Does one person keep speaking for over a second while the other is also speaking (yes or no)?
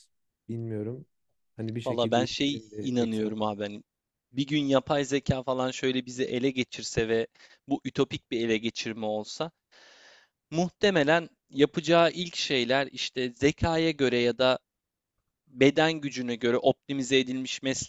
yes